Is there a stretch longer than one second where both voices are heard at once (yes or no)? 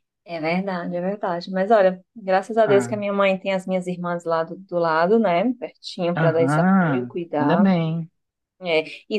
yes